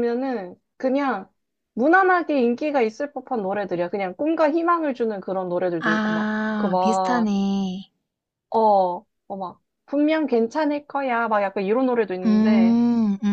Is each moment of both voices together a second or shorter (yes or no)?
no